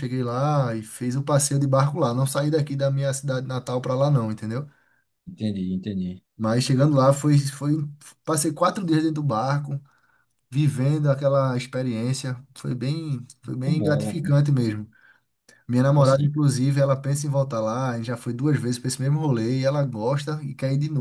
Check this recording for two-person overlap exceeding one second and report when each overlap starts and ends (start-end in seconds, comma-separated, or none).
13.4-14.7